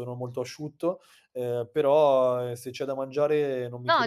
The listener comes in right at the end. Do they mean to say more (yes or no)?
yes